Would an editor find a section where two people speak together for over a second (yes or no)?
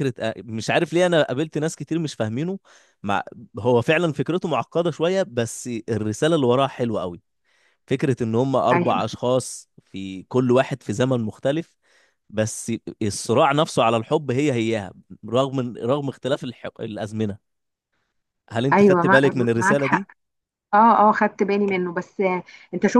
yes